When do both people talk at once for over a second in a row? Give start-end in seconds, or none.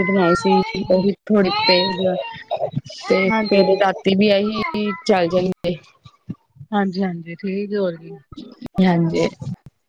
none